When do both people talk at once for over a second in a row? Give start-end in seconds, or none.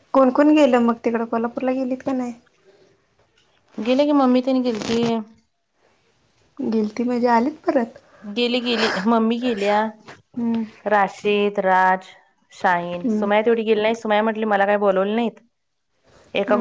none